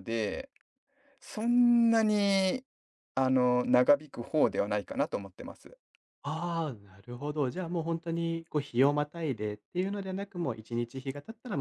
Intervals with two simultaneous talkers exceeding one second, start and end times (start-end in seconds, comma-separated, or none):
none